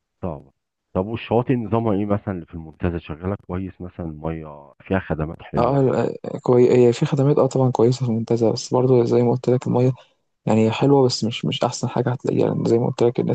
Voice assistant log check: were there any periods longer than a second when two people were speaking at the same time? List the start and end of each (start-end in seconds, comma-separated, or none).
none